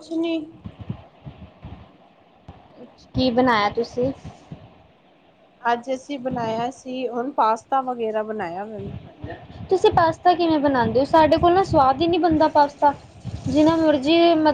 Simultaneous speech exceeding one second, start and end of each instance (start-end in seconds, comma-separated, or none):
none